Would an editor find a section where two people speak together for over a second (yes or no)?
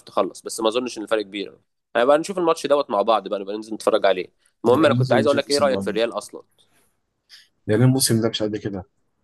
yes